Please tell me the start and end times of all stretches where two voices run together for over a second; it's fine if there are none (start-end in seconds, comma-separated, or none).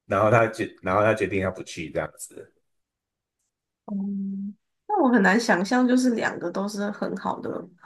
none